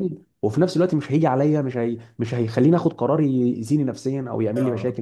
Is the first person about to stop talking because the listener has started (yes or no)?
yes